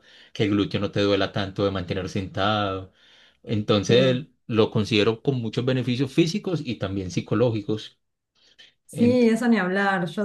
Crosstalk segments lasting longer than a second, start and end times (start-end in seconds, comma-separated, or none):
none